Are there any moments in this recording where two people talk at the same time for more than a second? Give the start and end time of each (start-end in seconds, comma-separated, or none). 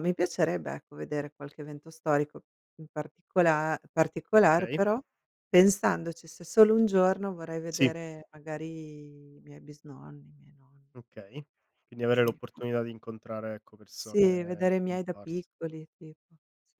13.9-15.5